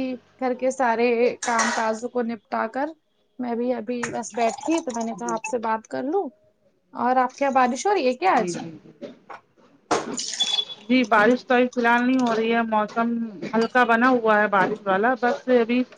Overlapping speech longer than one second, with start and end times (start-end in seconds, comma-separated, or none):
none